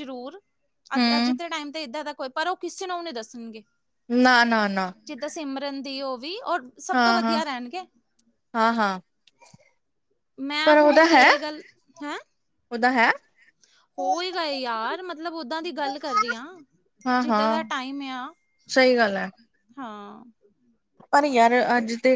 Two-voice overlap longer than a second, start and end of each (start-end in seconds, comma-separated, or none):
none